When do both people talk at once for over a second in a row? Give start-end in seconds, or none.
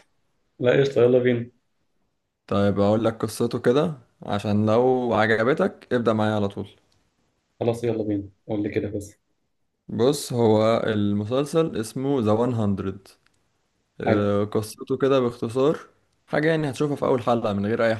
none